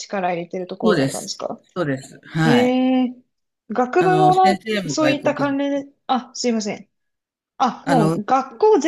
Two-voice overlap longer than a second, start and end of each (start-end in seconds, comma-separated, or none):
4.0-5.6